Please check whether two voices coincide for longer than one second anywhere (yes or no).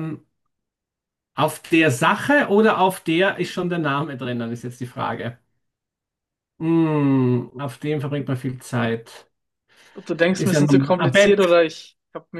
yes